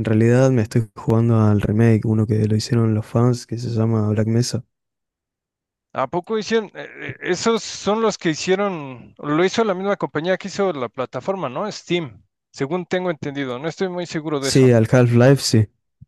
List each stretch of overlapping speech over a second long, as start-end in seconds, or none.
none